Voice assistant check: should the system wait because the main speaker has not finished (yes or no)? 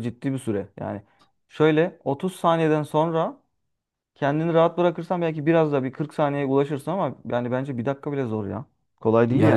no